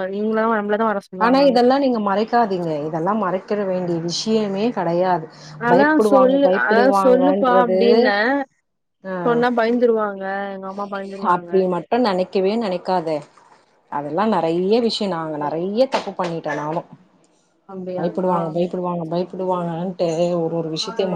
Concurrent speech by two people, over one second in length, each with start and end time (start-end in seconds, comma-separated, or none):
5.7-7.8